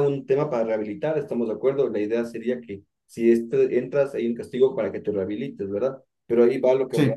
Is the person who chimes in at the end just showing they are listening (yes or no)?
yes